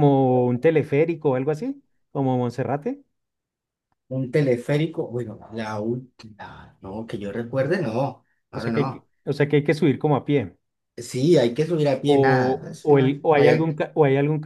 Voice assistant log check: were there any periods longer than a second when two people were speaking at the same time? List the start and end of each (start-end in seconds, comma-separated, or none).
12.1-13.8